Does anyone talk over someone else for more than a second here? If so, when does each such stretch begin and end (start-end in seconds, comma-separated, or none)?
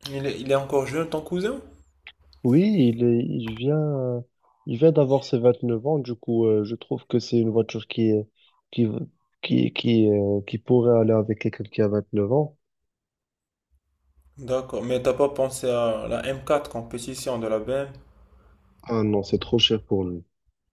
none